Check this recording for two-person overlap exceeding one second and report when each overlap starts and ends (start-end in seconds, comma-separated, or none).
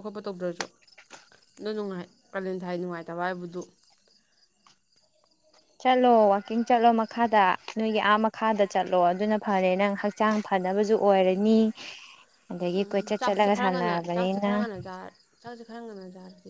13.2-14.7